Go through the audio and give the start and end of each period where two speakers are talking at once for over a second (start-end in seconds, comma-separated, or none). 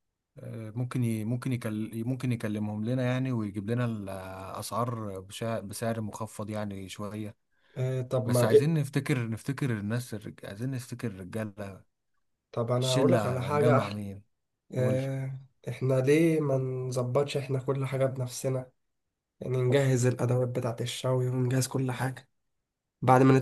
12.8-14.0